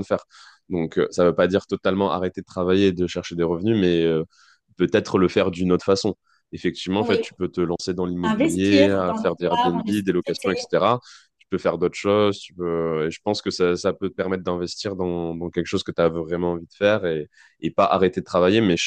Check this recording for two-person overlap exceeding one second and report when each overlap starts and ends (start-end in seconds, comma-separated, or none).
8.2-10.7